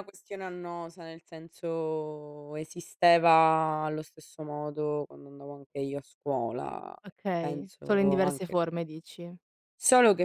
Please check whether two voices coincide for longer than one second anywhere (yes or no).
yes